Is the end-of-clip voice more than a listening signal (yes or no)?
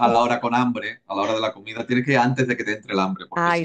yes